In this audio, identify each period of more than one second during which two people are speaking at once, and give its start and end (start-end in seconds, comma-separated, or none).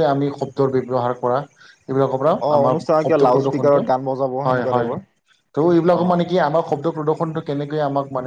2.5-5.0